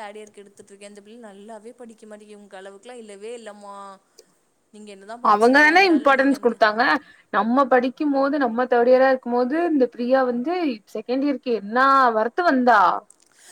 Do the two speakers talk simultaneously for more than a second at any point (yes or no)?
yes